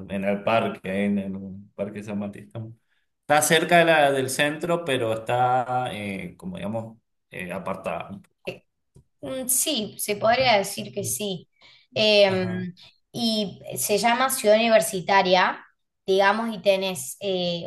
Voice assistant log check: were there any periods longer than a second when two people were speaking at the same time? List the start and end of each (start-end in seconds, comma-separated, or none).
none